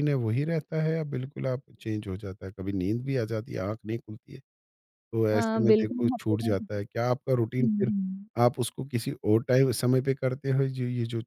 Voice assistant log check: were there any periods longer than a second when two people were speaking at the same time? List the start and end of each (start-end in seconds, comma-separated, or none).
5.3-6.7